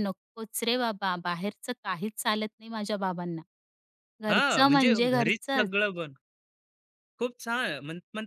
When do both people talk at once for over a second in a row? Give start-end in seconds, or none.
4.3-5.7